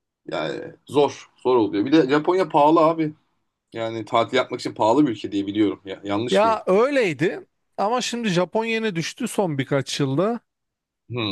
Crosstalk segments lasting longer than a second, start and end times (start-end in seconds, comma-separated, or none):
none